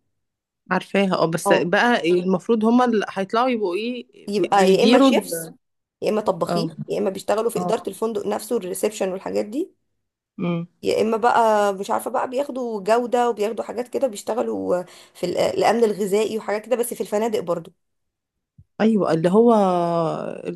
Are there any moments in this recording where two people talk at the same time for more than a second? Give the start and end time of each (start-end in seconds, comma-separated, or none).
4.3-5.5